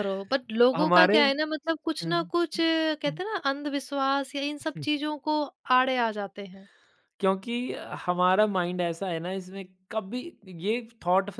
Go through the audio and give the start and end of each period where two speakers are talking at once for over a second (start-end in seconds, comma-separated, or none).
0.8-2.1